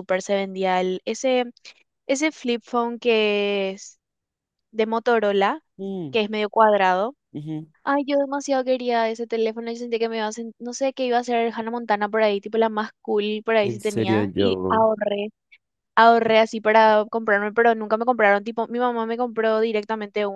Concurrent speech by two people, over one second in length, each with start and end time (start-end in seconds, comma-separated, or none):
13.6-14.8